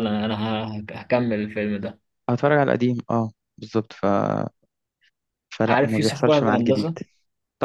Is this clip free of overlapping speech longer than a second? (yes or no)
no